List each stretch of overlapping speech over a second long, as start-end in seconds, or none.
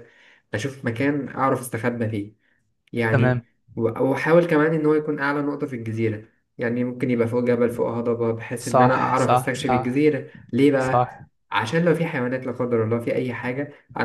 8.6-10.1